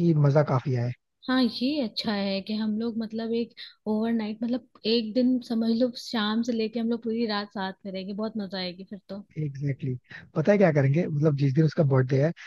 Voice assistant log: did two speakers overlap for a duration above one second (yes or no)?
no